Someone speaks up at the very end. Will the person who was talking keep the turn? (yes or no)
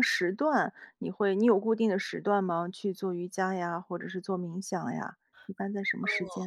no